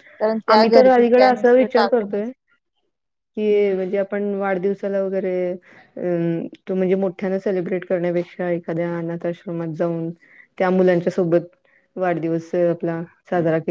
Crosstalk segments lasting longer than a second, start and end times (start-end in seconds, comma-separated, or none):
0.5-2.2